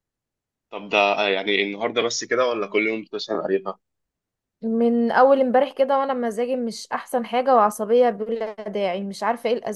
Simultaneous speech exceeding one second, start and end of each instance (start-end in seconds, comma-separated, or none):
none